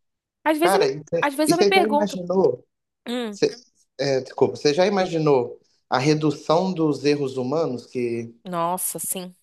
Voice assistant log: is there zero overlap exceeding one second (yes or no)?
no